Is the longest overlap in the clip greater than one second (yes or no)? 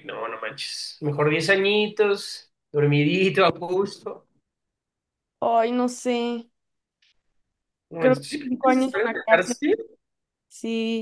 yes